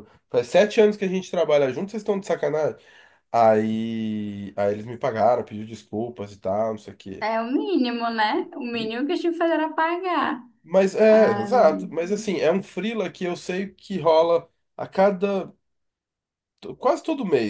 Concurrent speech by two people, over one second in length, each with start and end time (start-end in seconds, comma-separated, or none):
none